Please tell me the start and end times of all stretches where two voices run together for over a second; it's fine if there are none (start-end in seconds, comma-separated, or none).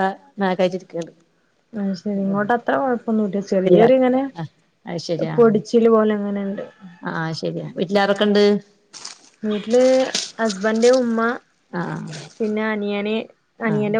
none